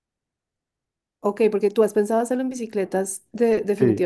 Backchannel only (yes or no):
no